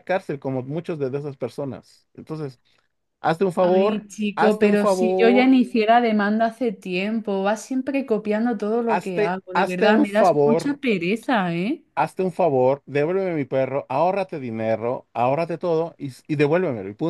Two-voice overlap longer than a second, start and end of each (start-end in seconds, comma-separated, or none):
3.6-5.6, 8.9-10.7